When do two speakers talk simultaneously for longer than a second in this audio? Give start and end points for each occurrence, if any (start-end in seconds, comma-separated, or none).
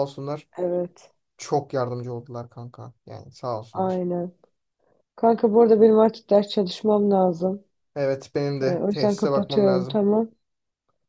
8.6-10.0